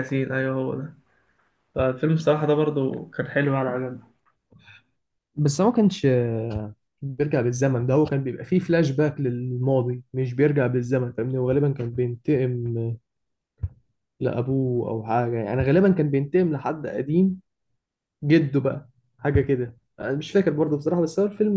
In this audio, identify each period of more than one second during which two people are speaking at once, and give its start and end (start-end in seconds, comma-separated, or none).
none